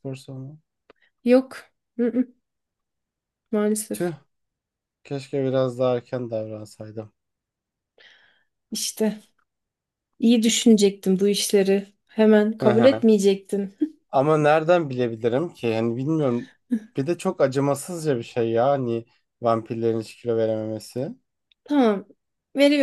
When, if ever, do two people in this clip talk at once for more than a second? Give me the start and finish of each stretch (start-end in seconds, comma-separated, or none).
none